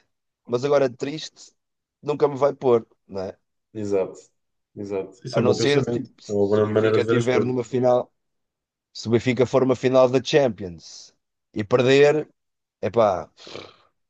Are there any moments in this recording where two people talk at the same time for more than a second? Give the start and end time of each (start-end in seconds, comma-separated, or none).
5.3-7.6